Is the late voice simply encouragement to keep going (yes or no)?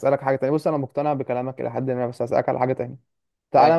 yes